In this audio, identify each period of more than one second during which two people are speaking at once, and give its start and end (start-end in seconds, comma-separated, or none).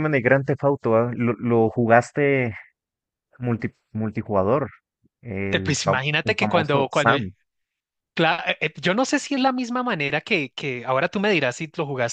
5.5-7.1